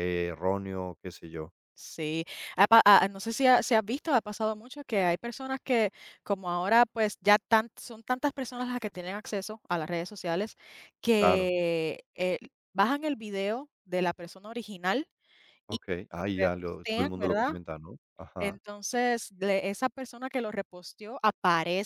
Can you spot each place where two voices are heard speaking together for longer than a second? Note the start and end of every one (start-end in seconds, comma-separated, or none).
15.7-17.5